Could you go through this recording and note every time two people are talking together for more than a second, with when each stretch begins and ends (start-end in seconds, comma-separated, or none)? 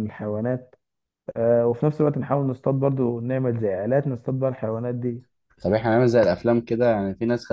none